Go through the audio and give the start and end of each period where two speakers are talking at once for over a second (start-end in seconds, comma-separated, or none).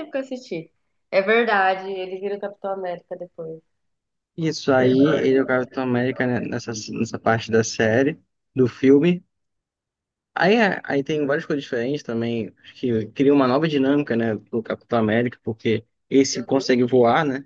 none